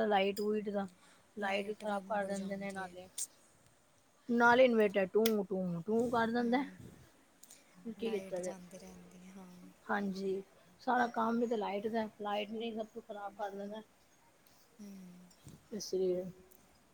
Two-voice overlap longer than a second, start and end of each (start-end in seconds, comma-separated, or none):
1.7-2.9